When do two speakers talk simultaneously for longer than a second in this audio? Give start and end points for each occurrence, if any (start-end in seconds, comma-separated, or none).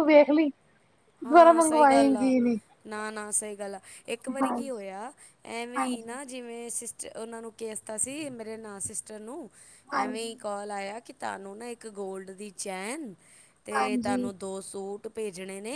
none